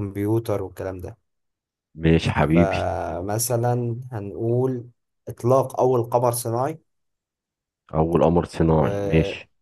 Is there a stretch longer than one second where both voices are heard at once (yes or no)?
no